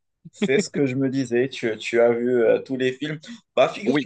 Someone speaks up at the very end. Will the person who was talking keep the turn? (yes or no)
yes